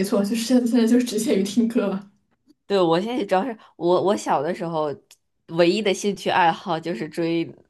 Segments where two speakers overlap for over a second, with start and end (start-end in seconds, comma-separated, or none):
none